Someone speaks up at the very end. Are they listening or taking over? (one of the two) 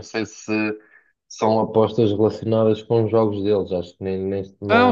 taking over